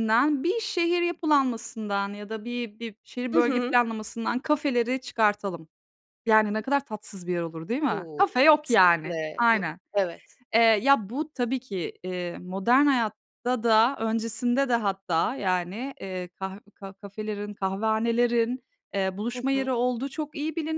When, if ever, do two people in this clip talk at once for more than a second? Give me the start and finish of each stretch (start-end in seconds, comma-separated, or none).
7.9-9.8